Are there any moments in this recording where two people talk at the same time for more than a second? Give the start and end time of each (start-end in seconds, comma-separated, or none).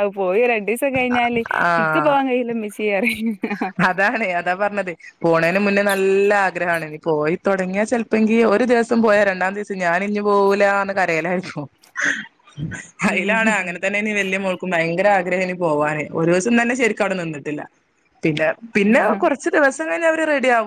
none